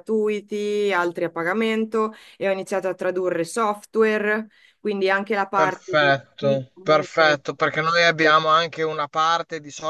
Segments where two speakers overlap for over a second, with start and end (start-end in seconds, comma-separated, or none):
5.5-7.4